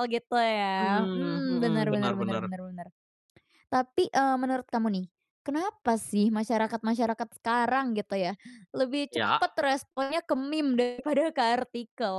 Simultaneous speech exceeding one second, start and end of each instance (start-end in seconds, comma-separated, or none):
0.8-2.5